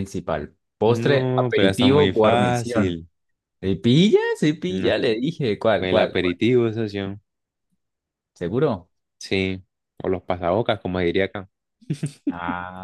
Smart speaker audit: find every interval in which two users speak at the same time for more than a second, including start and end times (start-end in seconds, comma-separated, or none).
0.9-3.0